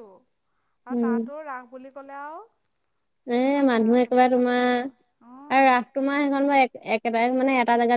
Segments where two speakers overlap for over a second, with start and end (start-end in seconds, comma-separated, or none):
3.3-5.7